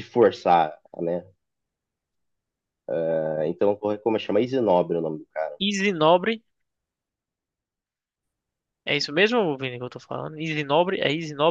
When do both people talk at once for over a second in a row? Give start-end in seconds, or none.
none